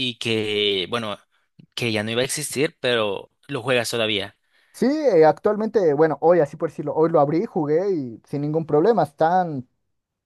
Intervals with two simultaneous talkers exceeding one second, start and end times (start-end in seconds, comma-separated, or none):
none